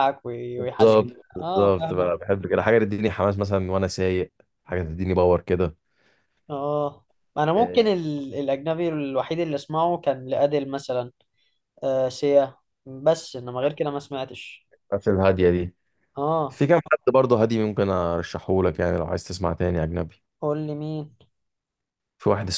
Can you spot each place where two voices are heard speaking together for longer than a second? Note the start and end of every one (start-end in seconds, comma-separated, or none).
0.6-2.1